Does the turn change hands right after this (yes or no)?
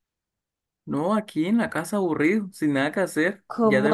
yes